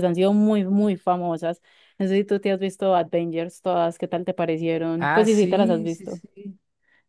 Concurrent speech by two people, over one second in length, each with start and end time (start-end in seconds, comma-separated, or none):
5.0-6.2